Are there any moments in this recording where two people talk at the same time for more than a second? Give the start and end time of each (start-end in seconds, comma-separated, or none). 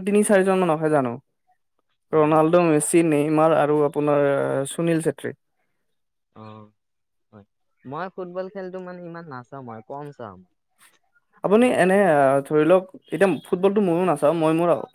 none